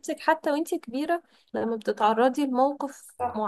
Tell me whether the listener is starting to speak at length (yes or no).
no